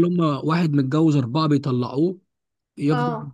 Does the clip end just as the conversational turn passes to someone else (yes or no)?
no